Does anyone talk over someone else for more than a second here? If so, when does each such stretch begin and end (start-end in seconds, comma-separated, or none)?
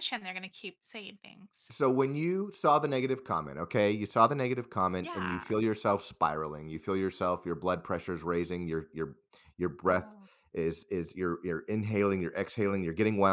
none